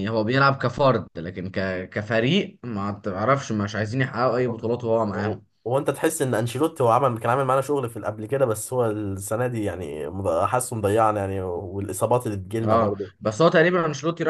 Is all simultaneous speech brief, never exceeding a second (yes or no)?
yes